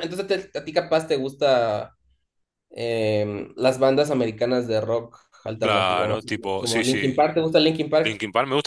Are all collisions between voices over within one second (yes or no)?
no